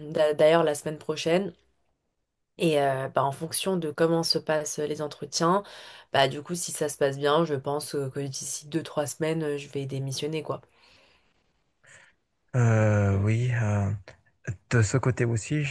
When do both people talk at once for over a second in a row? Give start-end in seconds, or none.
none